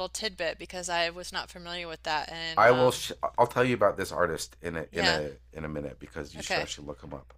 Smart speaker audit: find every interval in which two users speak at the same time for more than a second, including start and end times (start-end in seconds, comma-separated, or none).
none